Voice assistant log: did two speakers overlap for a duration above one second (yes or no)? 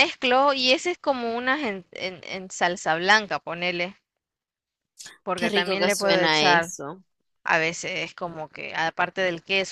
yes